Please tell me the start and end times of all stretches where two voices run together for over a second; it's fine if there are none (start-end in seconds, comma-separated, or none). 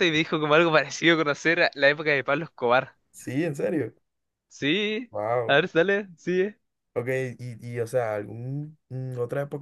none